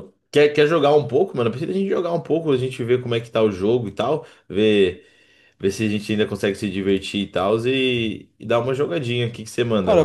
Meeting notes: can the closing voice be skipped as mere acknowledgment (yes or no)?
no